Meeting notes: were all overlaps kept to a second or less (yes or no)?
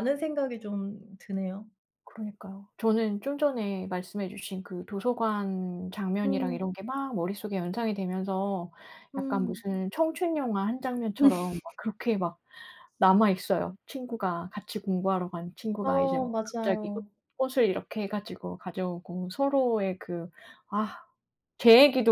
no